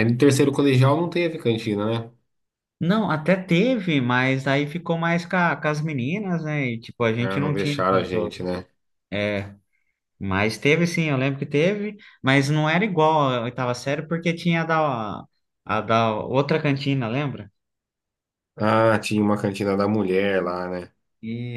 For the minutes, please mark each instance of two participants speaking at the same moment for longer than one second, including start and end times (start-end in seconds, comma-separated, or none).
7.2-8.4